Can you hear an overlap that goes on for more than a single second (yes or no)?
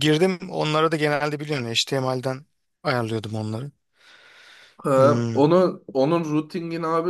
no